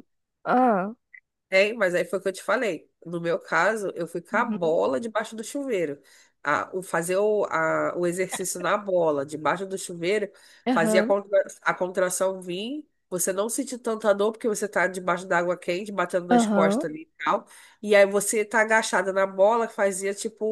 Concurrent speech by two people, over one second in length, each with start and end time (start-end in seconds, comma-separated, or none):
none